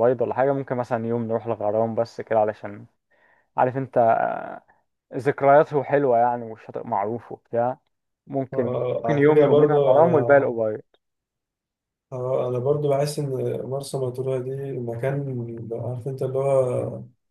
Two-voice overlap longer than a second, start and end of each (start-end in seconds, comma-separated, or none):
8.5-10.5